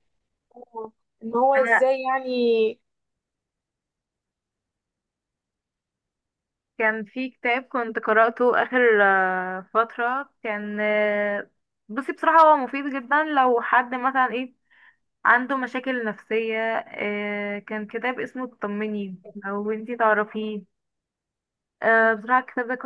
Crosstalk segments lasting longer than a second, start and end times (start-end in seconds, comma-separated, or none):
none